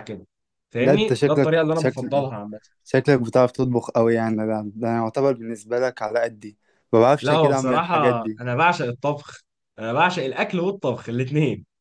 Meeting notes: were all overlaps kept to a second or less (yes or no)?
no